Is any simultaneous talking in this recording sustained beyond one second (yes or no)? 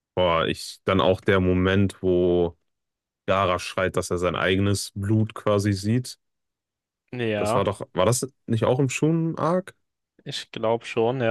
no